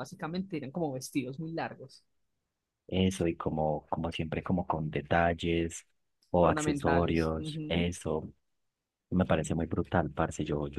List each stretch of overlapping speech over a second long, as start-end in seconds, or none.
6.4-7.8